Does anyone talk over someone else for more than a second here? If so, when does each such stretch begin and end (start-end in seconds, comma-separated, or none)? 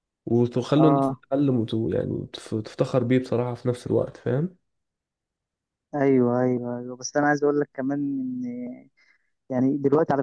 none